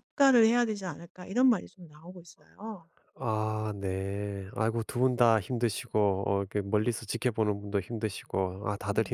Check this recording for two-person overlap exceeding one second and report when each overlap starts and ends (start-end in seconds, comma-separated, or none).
none